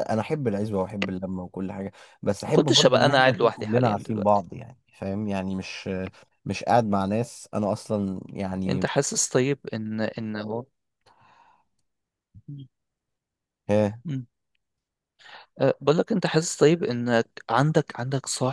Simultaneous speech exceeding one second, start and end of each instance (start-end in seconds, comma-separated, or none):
2.5-4.4